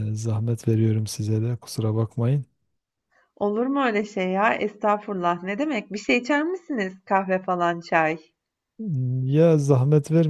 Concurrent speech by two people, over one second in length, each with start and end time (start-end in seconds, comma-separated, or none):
none